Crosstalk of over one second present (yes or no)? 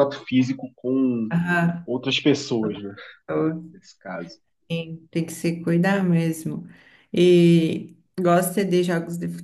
no